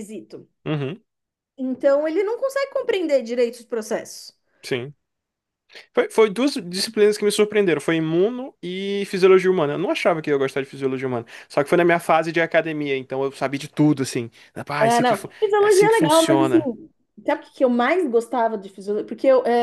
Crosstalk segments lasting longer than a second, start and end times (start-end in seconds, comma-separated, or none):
14.8-16.6